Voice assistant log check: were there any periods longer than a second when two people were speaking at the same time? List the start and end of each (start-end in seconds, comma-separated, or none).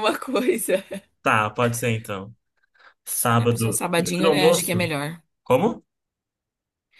3.3-4.9